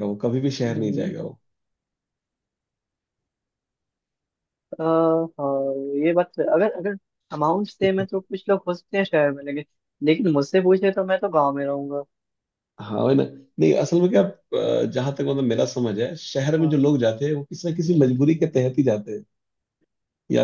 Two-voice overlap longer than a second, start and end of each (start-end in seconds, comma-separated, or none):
none